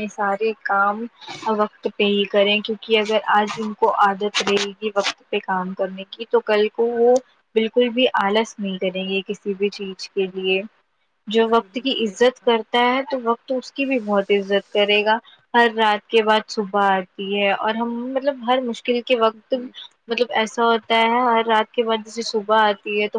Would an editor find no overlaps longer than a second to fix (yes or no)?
no